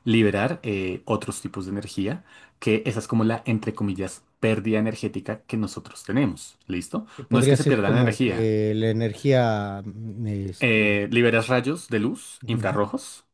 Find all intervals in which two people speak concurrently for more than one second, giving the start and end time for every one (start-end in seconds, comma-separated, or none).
7.2-8.5